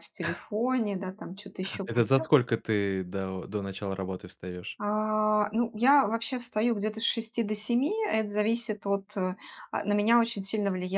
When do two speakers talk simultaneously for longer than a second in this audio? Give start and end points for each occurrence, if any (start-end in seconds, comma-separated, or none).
none